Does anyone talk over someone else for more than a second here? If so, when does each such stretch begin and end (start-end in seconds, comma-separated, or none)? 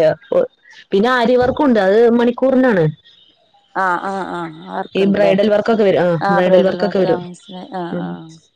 none